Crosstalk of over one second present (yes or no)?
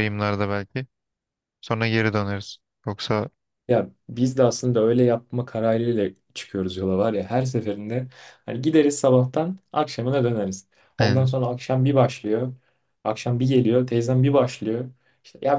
no